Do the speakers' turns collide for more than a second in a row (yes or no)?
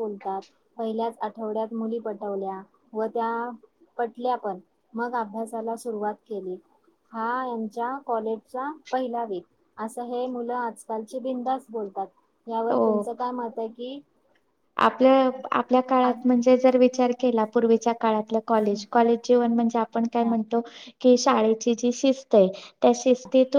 no